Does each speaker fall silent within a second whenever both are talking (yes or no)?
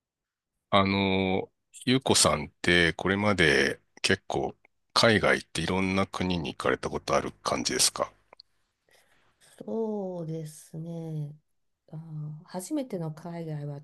yes